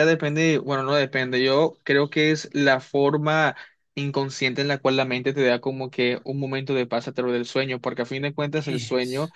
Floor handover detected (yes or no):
no